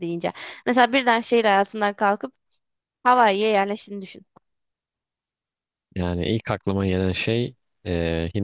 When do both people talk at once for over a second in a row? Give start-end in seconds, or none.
none